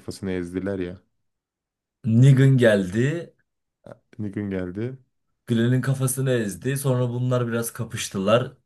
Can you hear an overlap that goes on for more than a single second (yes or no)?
no